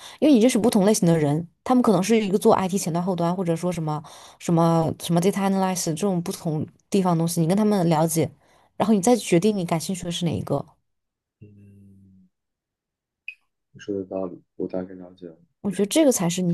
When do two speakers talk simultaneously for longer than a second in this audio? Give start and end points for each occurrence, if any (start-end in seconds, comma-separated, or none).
none